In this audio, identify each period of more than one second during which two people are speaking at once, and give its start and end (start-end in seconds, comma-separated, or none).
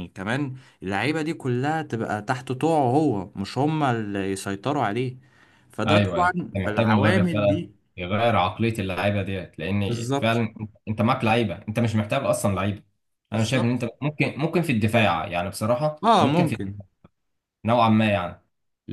5.9-7.7